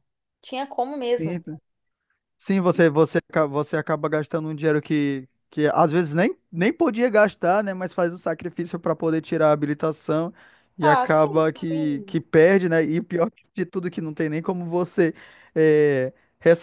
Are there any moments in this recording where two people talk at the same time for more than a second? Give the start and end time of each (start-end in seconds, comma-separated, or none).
10.8-12.2